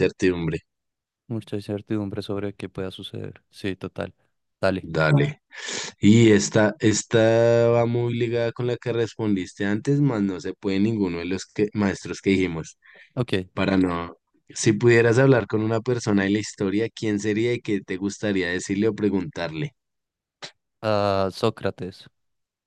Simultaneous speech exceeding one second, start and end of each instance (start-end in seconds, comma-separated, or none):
none